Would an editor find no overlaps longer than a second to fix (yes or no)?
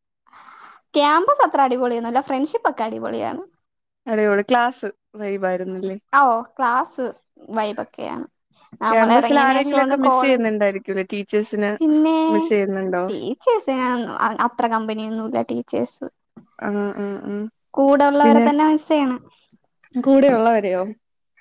no